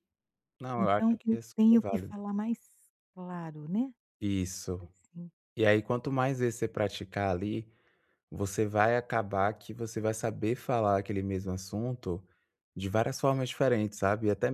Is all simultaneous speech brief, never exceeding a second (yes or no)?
no